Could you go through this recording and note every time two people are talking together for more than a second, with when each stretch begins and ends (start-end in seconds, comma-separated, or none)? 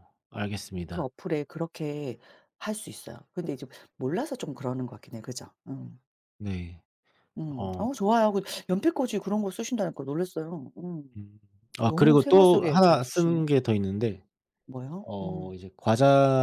11.8-13.4